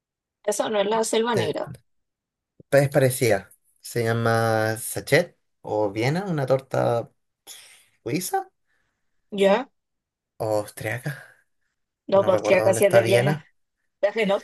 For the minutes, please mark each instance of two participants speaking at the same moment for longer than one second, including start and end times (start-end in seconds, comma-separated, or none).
12.1-13.4